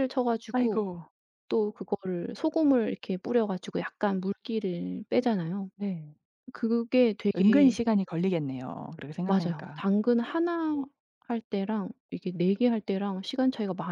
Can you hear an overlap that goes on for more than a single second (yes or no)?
no